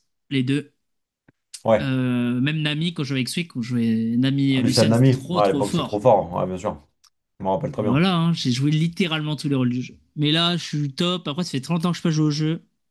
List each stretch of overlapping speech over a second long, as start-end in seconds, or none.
4.5-6.1